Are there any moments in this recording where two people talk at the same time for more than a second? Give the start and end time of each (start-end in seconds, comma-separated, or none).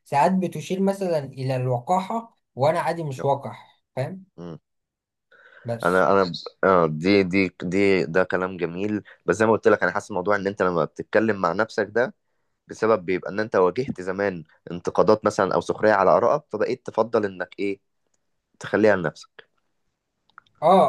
none